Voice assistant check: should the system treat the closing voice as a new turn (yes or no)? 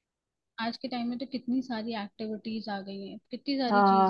yes